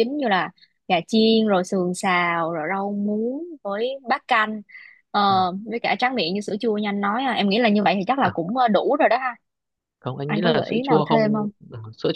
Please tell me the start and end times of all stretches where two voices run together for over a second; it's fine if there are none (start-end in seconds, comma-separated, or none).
10.2-11.5